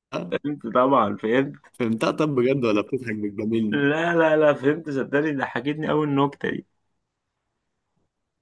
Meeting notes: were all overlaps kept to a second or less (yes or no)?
yes